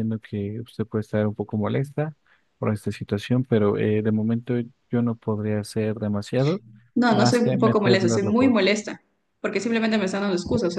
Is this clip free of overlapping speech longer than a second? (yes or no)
no